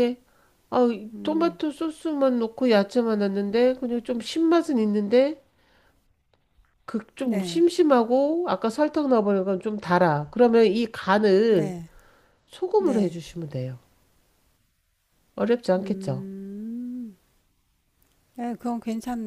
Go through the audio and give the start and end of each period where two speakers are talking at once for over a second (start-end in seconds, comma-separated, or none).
none